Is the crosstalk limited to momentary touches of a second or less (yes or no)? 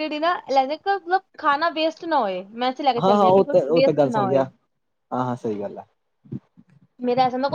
no